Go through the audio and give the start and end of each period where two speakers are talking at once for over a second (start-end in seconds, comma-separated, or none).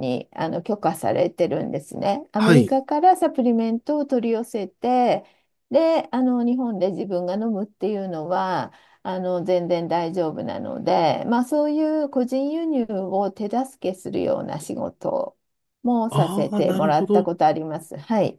16.1-17.3